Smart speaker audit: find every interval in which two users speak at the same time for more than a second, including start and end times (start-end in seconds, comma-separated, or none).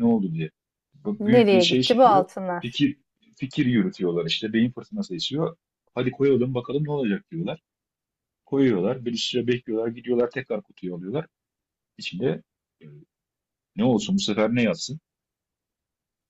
1.2-2.9